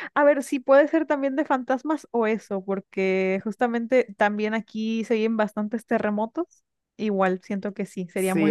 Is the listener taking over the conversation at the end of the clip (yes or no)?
yes